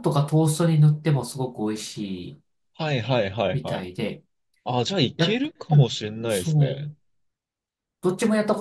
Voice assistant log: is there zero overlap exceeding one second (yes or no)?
no